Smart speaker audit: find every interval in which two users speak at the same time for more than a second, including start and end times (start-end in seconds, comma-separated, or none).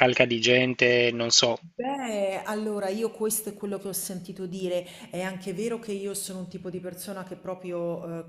none